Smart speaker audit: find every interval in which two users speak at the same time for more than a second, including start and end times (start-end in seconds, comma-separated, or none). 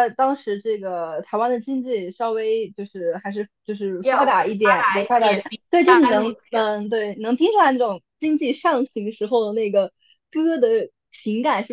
4.0-6.4